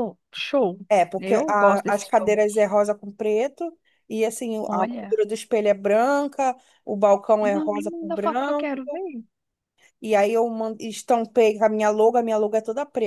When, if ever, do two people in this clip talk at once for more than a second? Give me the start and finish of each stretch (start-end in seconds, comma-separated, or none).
1.2-2.6, 7.4-8.7